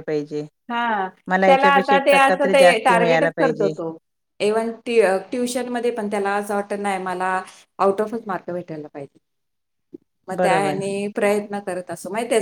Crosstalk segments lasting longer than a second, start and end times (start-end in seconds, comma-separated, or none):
2.1-3.7